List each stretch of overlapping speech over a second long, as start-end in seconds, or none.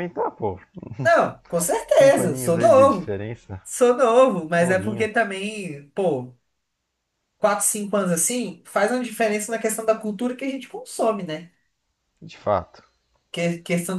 1.9-3.1